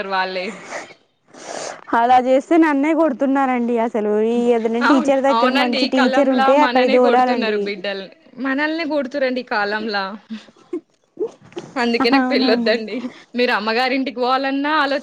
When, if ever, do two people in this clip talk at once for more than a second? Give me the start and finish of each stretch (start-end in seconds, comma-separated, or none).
5.9-7.6